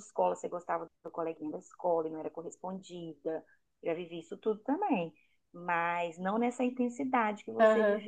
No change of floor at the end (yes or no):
no